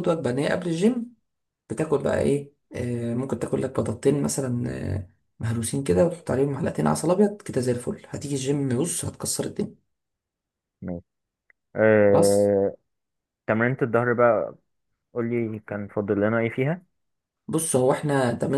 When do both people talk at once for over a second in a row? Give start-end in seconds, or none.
none